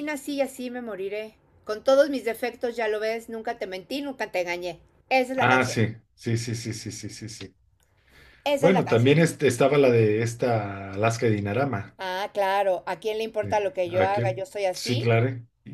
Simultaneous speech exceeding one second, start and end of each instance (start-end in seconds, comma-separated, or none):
13.4-15.2